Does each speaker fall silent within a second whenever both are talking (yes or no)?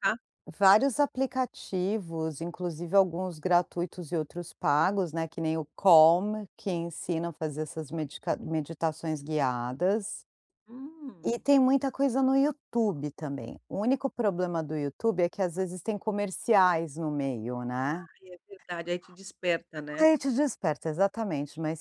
yes